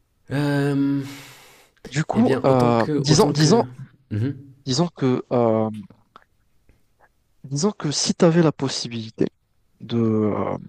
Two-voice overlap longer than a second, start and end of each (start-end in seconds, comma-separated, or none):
2.1-3.6